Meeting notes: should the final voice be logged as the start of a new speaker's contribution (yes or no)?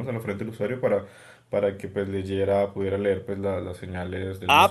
yes